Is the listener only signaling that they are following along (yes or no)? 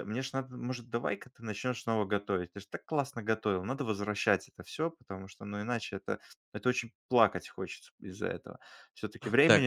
no